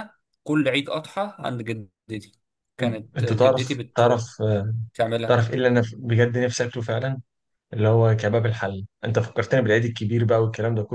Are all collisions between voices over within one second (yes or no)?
no